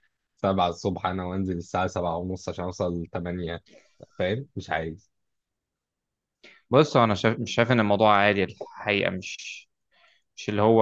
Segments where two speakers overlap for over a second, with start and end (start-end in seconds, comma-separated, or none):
none